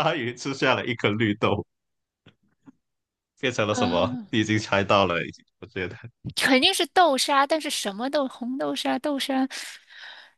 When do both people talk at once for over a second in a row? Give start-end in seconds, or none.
none